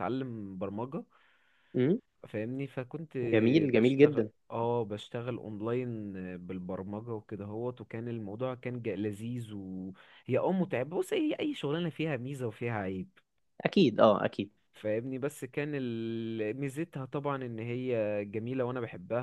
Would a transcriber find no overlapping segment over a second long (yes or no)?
yes